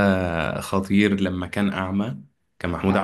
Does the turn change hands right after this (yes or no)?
no